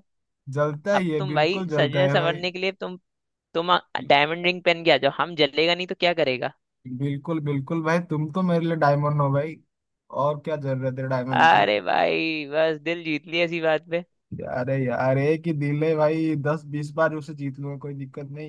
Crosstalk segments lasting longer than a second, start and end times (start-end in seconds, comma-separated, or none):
0.9-2.4